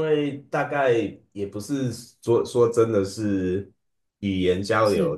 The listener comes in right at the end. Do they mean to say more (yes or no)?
no